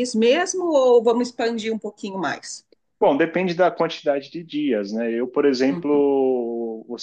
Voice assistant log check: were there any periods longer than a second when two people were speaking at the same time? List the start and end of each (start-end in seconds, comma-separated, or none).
none